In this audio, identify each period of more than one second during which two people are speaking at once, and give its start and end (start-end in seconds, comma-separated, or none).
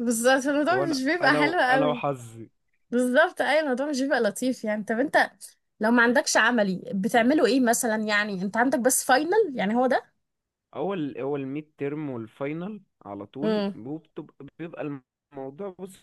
0.7-2.0